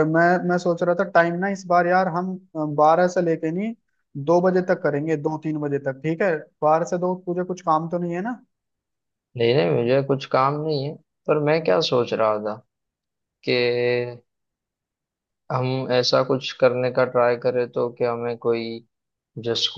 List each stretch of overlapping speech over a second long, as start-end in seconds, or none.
none